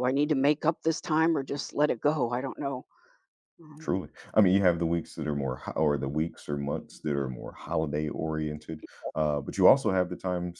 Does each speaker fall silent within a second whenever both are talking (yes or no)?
yes